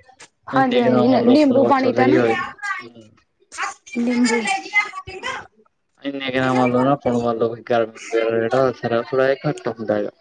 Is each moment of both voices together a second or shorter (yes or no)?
no